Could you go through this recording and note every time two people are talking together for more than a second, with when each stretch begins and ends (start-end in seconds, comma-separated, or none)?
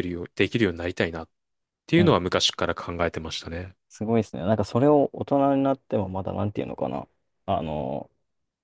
none